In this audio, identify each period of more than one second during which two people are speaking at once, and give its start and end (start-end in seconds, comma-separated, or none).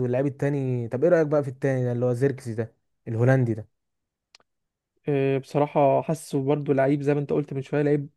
none